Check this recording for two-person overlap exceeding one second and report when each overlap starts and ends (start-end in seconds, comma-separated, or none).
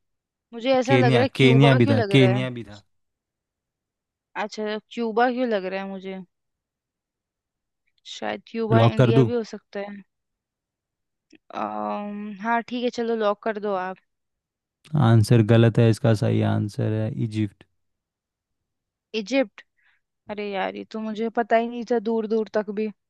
0.8-2.5